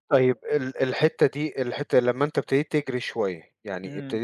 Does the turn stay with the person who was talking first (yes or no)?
yes